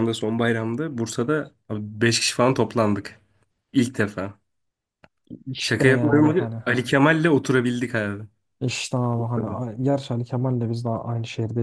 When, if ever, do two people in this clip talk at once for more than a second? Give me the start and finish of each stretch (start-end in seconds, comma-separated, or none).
5.6-6.9